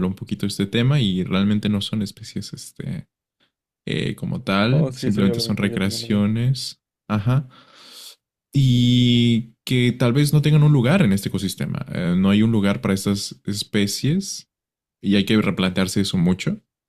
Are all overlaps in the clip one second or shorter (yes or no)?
no